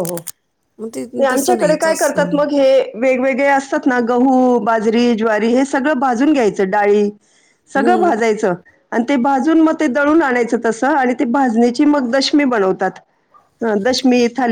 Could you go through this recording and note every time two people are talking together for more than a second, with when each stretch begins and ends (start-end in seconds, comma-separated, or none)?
none